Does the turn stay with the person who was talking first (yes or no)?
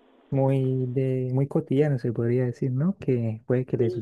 yes